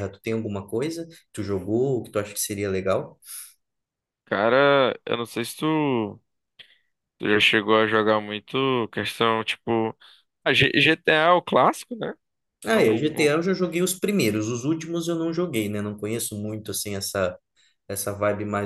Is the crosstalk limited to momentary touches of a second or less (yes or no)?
yes